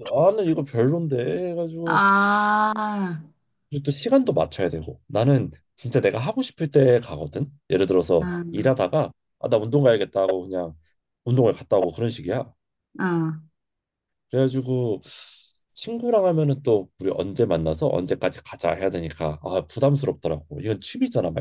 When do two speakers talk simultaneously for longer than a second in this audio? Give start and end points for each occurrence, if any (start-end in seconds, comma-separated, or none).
none